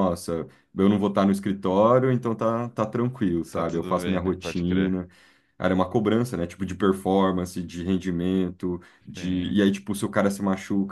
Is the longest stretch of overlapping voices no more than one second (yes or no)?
no